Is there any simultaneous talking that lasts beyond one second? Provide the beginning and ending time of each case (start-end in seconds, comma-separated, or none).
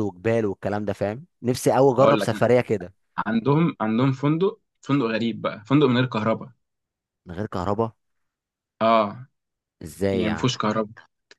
none